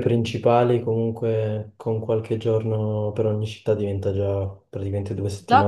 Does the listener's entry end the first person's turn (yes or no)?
yes